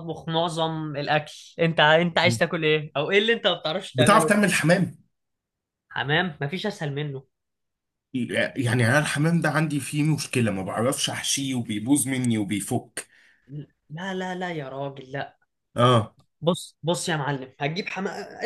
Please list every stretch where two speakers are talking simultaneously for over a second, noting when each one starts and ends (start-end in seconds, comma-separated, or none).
none